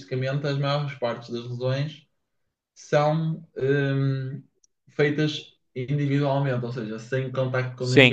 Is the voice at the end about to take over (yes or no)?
no